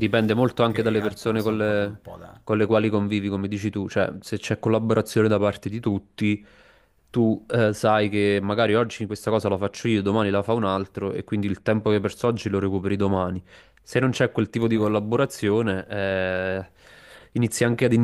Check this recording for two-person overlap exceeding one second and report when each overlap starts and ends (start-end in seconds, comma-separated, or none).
0.7-2.0